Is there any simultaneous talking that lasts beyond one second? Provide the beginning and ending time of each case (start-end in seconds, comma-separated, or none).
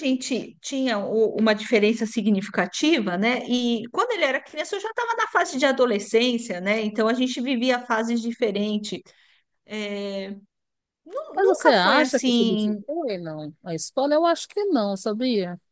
11.4-12.8